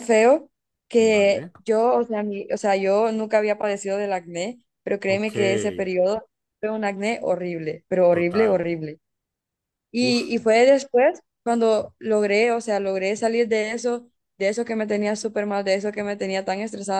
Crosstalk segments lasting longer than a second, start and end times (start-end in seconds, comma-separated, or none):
none